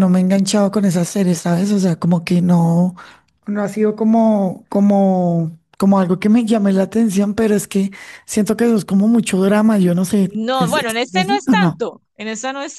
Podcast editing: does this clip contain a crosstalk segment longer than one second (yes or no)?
yes